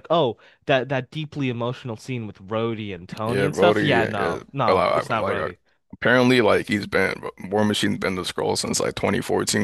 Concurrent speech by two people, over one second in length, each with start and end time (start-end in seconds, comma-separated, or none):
3.2-5.5